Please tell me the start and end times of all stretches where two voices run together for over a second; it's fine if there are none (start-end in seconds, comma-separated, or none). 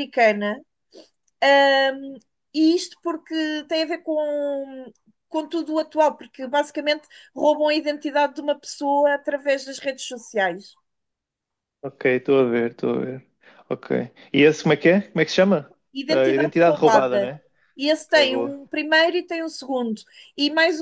16.1-17.3